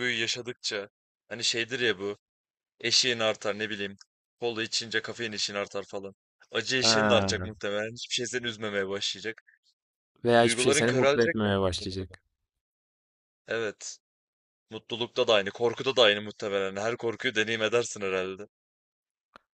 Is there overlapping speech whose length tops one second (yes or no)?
yes